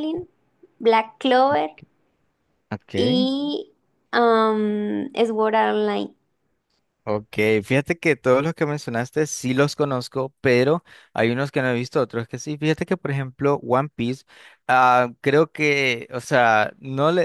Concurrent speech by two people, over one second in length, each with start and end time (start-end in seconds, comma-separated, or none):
none